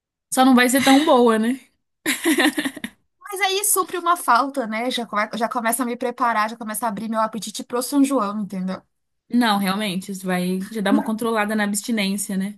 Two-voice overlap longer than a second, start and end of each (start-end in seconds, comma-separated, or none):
none